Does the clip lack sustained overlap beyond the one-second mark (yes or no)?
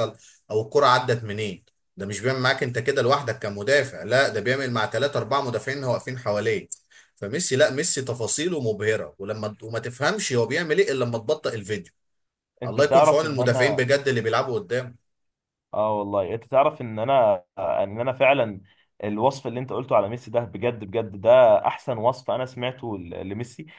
no